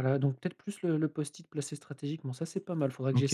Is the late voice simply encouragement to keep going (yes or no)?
no